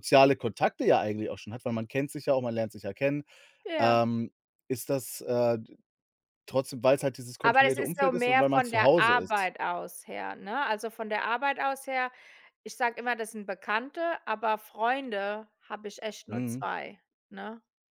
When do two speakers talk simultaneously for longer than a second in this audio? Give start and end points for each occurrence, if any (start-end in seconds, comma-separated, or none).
7.4-9.5